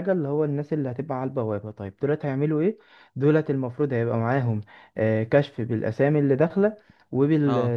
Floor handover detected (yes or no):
no